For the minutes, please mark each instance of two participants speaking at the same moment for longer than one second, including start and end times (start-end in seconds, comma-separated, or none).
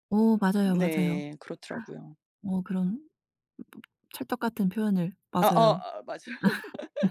none